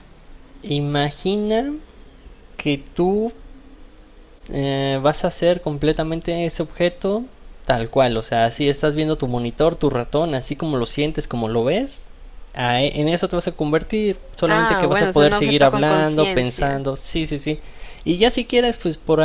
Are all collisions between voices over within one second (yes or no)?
no